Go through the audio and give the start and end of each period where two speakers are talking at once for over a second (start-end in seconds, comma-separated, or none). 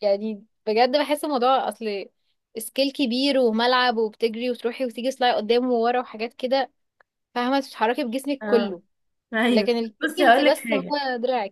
9.5-11.0